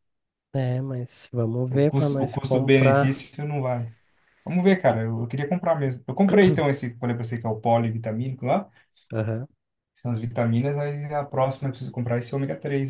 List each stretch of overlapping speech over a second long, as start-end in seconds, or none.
1.7-3.2